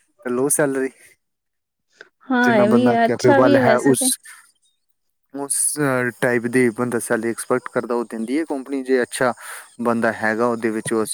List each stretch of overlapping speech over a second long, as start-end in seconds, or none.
2.5-4.0